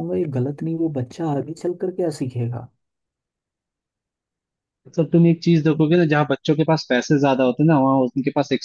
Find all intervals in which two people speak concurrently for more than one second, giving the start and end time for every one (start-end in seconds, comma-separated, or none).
none